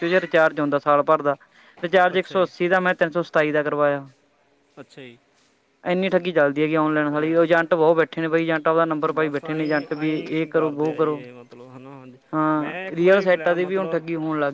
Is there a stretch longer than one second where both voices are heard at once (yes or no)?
yes